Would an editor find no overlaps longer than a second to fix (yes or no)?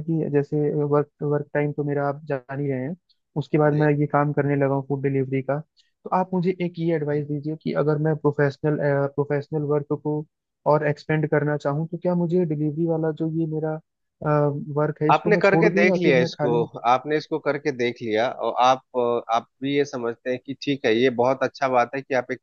no